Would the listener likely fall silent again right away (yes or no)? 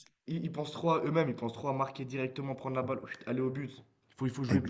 yes